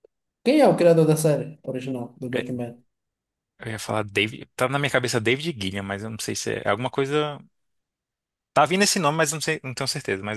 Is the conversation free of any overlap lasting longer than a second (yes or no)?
yes